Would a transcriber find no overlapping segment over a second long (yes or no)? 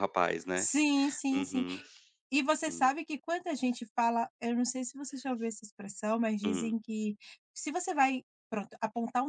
yes